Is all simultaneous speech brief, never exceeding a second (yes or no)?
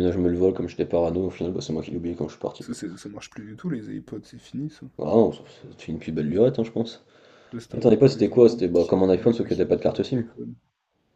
no